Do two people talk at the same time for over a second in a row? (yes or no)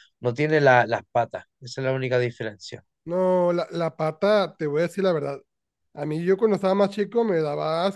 no